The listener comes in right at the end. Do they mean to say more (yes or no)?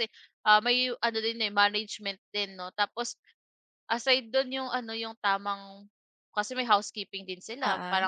no